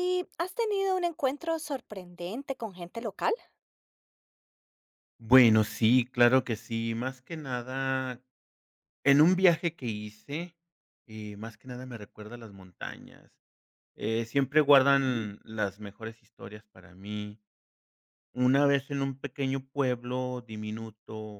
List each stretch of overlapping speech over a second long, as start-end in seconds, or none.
none